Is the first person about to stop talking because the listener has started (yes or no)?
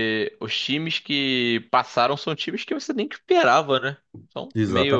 yes